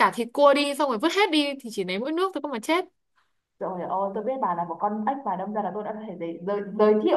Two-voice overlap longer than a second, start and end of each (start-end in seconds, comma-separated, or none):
none